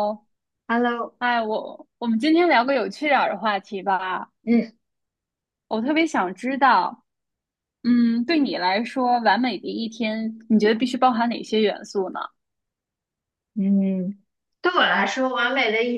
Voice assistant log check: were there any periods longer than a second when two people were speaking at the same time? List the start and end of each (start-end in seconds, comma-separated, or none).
none